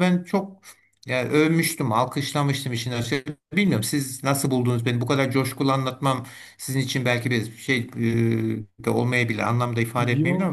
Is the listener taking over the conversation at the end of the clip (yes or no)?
yes